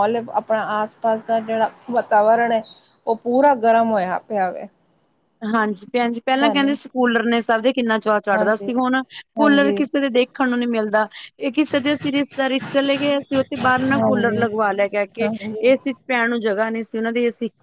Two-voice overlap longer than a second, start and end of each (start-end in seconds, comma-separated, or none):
none